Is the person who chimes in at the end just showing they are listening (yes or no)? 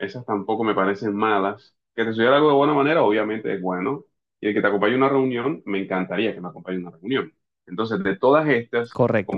no